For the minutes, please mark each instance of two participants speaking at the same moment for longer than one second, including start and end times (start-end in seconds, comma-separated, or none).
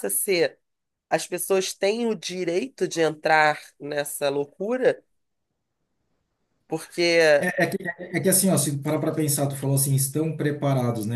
none